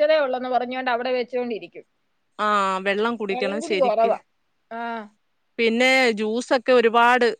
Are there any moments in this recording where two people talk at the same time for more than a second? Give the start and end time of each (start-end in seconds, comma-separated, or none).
none